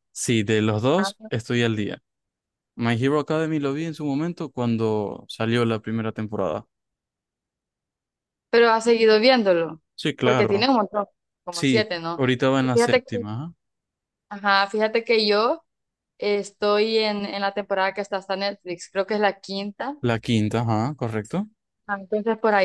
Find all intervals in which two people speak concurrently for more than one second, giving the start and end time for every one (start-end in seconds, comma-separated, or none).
11.5-13.2